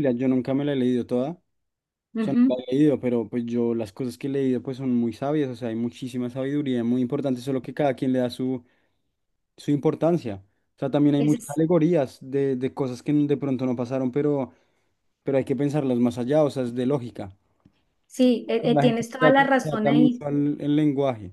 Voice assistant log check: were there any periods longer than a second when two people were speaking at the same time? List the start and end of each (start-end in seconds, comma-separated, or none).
18.7-20.2